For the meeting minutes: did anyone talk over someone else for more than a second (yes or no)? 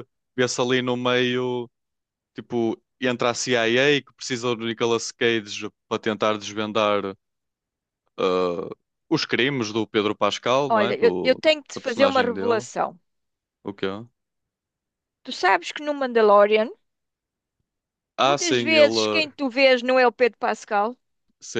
yes